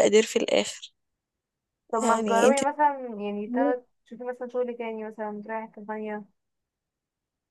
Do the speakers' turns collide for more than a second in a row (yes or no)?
no